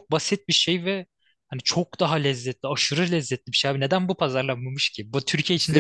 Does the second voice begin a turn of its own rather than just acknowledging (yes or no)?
yes